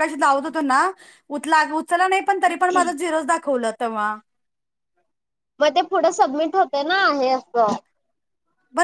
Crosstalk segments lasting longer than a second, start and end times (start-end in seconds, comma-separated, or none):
none